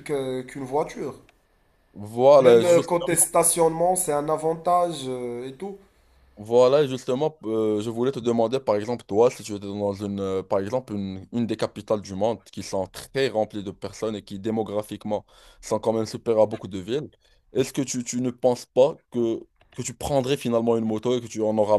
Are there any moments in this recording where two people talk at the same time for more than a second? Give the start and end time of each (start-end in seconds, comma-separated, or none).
none